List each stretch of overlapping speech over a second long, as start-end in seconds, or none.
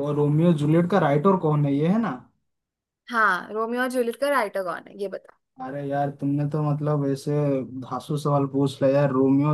none